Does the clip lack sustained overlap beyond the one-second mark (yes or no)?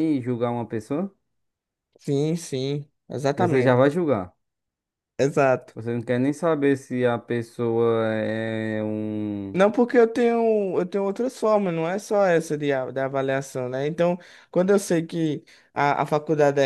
yes